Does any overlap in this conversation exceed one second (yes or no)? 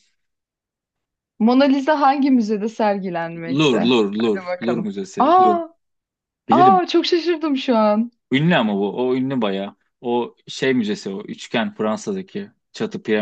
yes